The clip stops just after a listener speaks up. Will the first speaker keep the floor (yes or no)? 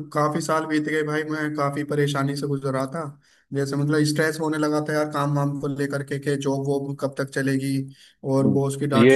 no